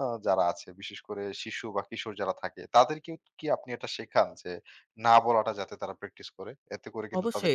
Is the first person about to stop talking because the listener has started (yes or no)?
yes